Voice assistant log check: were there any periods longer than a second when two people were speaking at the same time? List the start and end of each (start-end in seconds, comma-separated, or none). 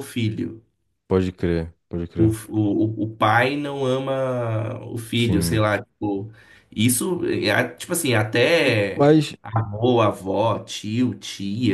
none